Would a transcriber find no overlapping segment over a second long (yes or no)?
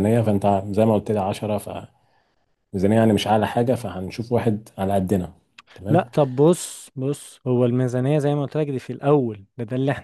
yes